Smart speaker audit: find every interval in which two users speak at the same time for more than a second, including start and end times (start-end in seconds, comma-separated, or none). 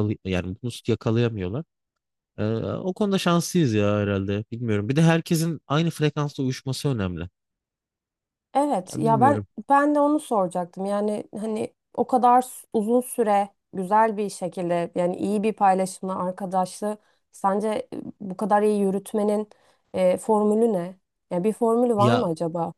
none